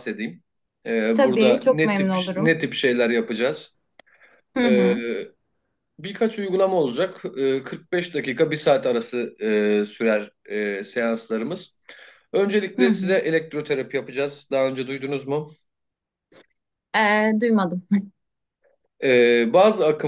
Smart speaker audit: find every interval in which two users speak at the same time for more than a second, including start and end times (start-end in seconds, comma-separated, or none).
1.1-2.6